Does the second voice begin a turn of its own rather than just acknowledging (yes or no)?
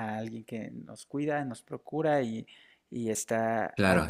yes